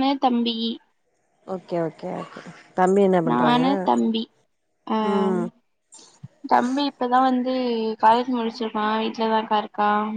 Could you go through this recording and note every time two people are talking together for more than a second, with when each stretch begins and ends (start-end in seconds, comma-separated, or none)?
none